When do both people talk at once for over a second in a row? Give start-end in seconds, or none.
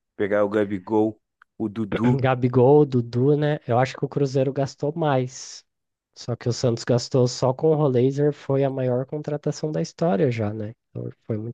none